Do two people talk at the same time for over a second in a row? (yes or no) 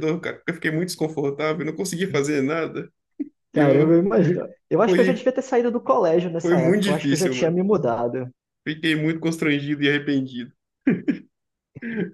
yes